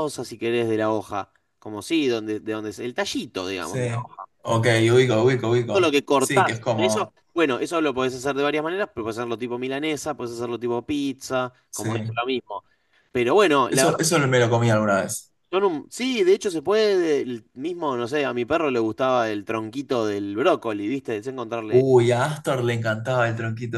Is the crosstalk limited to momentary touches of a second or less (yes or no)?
no